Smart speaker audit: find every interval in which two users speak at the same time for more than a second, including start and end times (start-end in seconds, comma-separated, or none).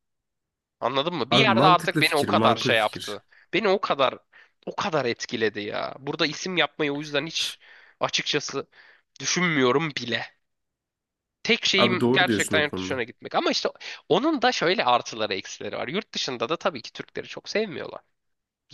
1.3-3.2, 11.8-13.0